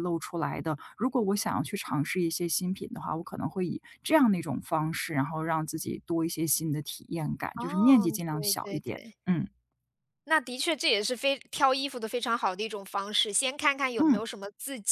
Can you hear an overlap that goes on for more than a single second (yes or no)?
yes